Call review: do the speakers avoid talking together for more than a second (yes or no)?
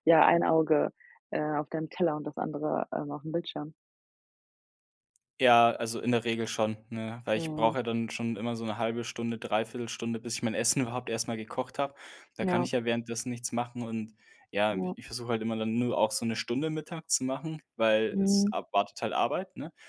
yes